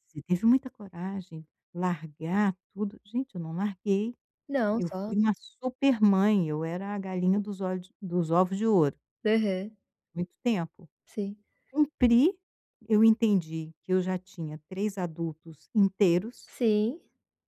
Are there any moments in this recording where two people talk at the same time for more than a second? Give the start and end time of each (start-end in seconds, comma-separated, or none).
none